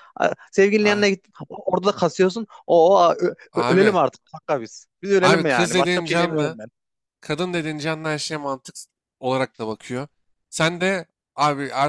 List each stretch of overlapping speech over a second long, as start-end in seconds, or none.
5.2-6.6